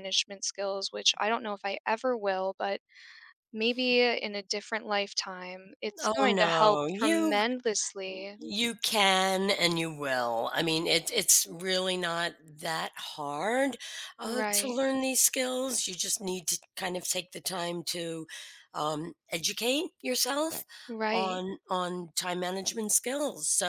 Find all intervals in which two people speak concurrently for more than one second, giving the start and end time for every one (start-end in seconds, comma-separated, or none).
6.0-7.4